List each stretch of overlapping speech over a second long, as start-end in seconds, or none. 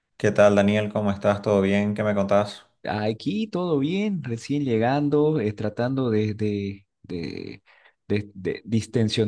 none